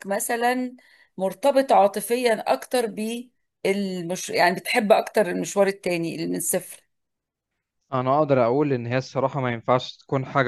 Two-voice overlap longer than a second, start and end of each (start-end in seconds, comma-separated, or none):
none